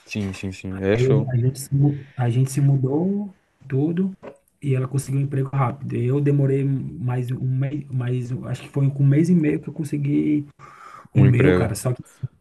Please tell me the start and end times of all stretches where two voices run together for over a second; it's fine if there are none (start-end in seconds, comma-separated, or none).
none